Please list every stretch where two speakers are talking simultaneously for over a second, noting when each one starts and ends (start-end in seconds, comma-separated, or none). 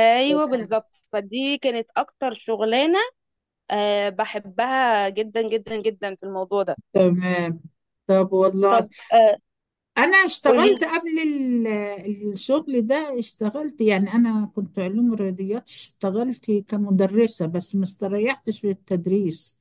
none